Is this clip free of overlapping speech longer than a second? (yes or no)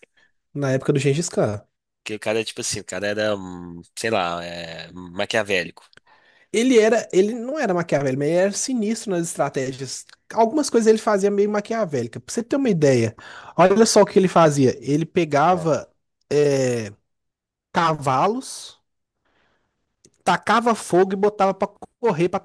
yes